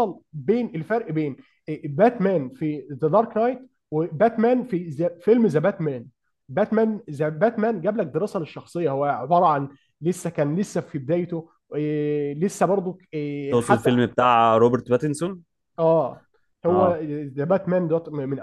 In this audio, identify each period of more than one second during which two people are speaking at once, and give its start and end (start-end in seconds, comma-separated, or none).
none